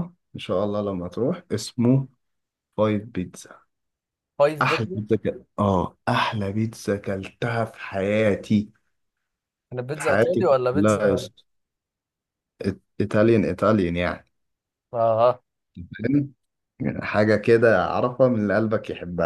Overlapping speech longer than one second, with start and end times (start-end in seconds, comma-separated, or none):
9.9-11.3